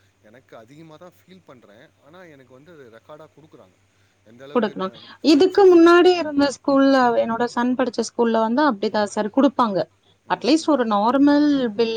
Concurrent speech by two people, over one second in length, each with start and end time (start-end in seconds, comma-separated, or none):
none